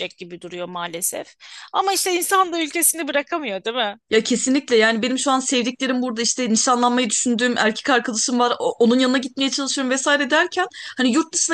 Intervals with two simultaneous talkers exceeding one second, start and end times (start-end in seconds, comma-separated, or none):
none